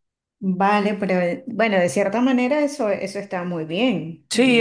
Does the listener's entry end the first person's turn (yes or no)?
yes